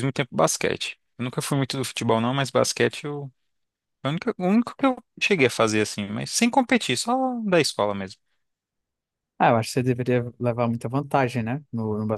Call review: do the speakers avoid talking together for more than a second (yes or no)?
yes